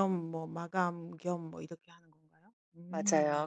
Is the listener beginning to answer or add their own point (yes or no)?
yes